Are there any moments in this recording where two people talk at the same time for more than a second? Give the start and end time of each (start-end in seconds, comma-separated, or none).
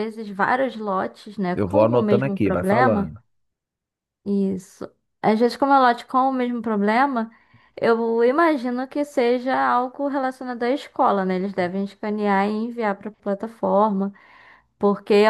1.5-3.1